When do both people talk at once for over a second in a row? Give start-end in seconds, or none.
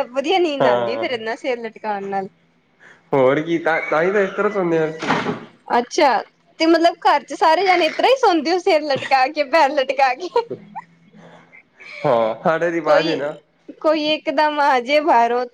none